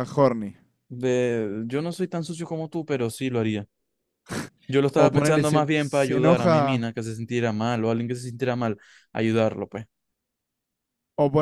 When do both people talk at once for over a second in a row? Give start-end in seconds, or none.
4.9-6.9